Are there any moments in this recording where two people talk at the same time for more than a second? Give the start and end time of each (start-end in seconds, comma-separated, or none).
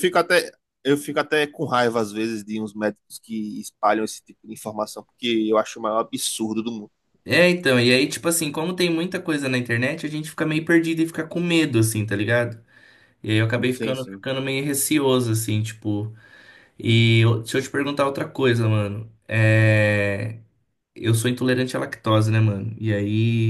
none